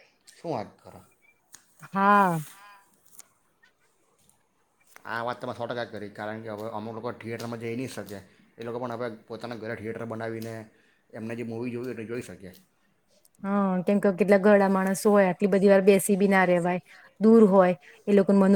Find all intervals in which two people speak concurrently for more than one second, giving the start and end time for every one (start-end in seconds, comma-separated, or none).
none